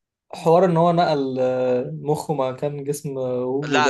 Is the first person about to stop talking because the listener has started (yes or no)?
yes